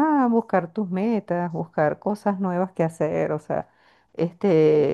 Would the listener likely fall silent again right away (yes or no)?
yes